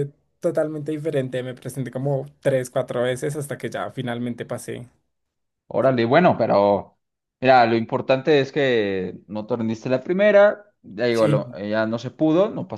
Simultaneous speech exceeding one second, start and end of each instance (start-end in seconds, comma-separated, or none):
none